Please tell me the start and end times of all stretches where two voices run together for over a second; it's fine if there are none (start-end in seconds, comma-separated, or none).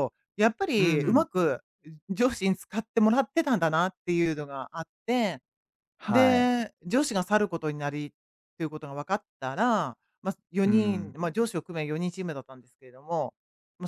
none